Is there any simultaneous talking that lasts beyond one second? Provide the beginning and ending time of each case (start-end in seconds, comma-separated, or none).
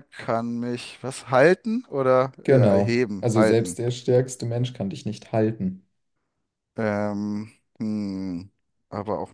2.4-3.8